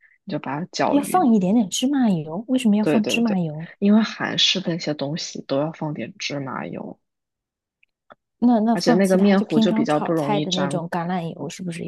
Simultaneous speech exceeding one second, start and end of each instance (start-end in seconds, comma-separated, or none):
8.7-10.8